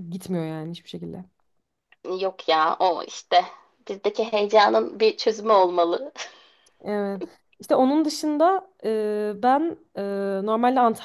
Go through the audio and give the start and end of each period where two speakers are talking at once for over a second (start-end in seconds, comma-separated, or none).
none